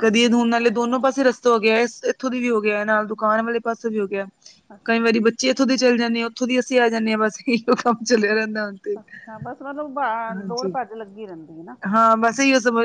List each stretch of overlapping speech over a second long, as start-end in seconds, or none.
none